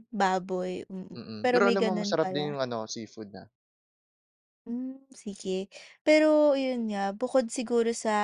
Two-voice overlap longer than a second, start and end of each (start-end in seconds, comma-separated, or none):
1.1-2.6